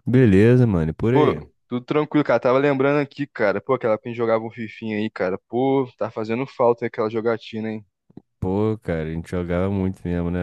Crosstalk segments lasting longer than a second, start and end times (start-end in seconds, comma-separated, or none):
none